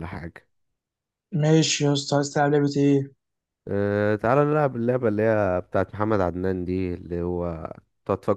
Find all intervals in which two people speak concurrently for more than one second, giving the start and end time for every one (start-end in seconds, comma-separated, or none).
none